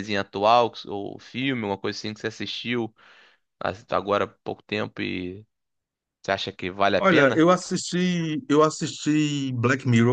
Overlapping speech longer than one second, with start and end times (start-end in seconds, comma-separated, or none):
none